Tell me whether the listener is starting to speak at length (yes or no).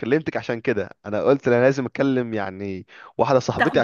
no